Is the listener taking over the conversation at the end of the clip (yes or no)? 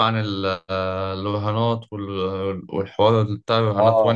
yes